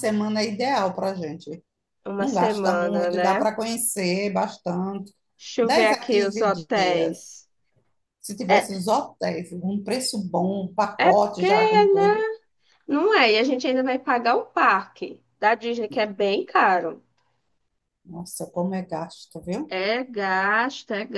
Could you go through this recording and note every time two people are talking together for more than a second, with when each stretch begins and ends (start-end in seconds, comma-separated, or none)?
2.2-3.5, 5.6-7.3, 11.0-12.2